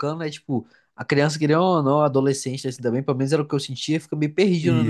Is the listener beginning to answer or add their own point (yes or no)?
no